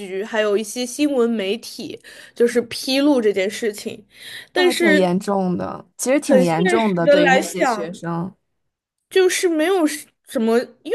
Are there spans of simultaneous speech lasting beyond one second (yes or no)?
yes